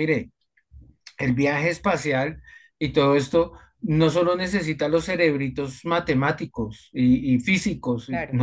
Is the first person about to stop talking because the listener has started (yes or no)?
no